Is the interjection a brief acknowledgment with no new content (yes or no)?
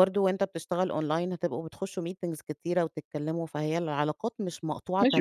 no